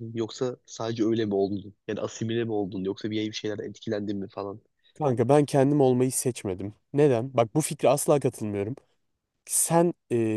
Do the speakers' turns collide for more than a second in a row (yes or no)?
no